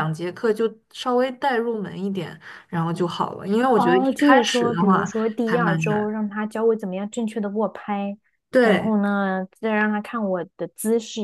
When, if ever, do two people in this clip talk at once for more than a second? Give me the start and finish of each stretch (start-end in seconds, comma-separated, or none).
3.8-6.1